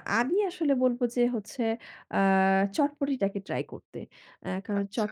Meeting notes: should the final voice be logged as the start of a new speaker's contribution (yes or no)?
yes